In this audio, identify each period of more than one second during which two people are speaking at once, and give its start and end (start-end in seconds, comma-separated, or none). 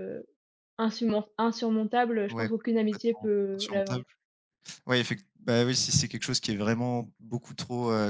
2.3-4.0